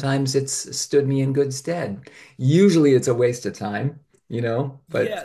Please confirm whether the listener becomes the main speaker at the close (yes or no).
yes